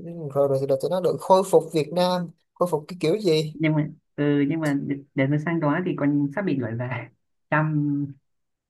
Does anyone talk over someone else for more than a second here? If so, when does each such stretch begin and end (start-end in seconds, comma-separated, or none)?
none